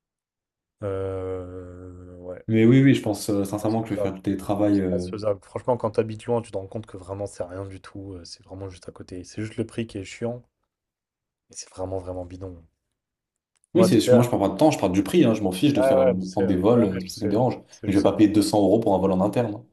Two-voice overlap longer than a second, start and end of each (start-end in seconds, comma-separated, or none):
15.8-18.3